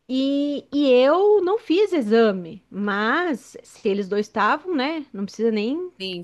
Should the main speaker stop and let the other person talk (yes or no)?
no